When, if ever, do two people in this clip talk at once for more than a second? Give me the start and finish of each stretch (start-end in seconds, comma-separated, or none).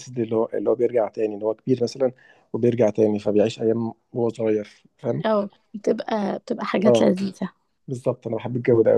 none